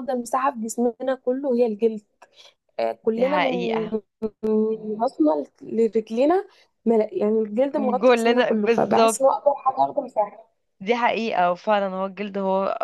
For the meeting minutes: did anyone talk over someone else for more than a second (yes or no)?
yes